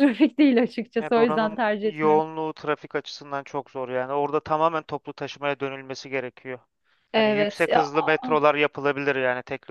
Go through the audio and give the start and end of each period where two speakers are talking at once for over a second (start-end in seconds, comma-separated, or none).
1.0-2.2, 7.1-8.5